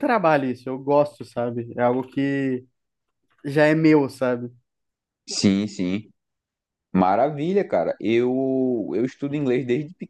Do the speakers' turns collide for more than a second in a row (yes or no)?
no